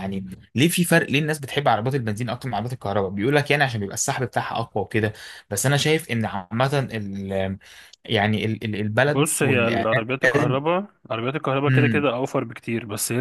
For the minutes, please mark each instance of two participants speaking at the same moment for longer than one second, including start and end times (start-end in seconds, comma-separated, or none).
9.0-10.6